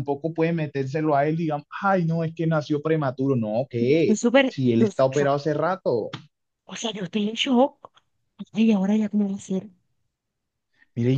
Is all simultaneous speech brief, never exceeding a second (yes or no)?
no